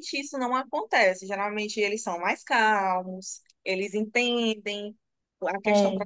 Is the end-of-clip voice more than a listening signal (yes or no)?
no